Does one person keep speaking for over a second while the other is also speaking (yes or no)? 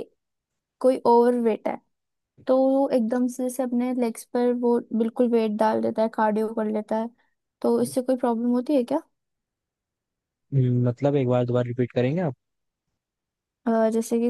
no